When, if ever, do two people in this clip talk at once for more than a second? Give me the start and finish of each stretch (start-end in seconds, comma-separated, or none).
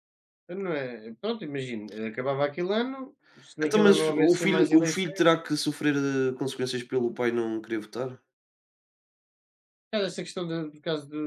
3.6-5.3